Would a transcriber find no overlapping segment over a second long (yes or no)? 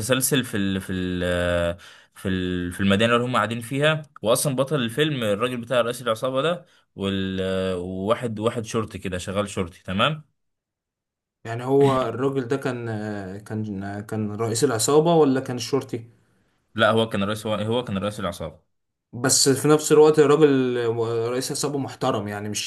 yes